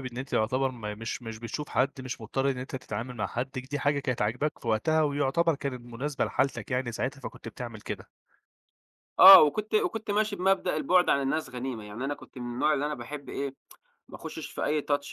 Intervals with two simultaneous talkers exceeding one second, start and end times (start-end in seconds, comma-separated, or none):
none